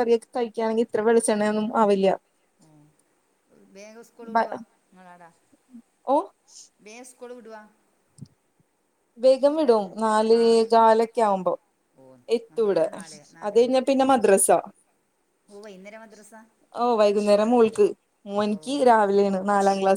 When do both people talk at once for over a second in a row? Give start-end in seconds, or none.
none